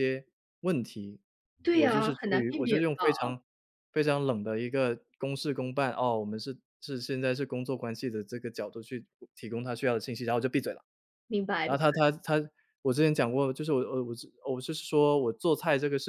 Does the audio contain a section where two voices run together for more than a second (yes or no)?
yes